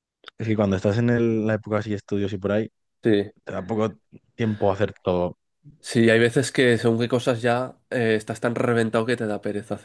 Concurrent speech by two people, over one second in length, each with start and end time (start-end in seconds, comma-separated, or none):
none